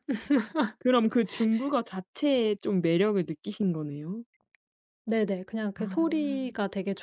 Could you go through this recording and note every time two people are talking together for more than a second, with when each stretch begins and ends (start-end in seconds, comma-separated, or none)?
none